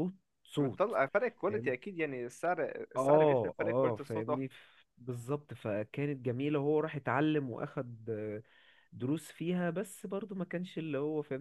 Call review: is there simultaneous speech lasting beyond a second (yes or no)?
yes